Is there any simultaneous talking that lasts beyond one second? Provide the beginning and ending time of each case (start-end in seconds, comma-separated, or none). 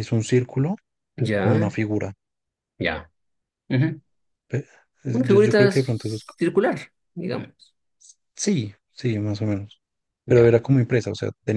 5.1-6.3